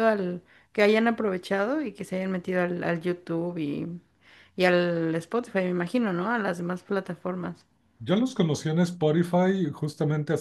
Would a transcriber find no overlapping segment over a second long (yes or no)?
yes